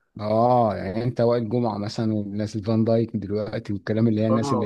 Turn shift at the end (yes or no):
yes